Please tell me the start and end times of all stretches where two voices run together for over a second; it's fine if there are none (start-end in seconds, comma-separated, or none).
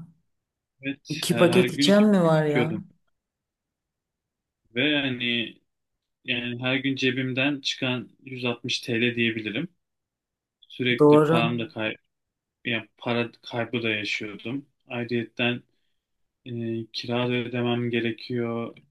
1.1-2.8